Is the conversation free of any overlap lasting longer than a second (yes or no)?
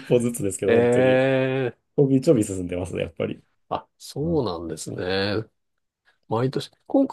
yes